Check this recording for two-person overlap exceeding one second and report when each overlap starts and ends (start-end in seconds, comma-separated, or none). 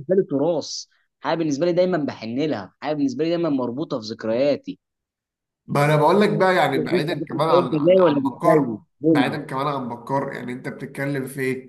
6.9-9.4